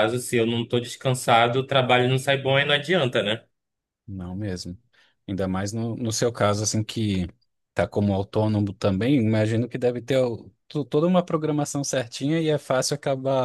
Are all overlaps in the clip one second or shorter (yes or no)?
yes